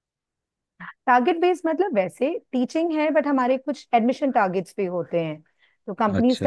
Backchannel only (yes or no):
yes